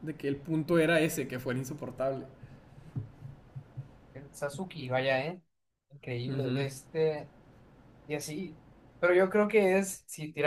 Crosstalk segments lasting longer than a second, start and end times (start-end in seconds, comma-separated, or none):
none